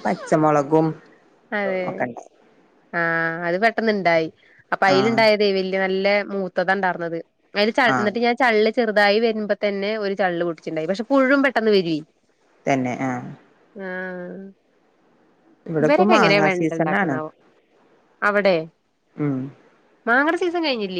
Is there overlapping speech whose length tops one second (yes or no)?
yes